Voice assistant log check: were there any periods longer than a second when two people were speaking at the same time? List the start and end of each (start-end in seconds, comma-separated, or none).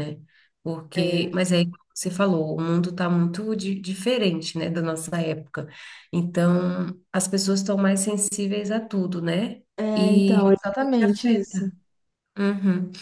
9.8-11.7